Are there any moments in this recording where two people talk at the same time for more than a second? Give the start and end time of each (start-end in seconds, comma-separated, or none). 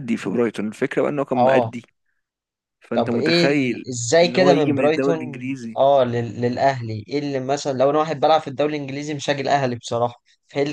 2.9-5.8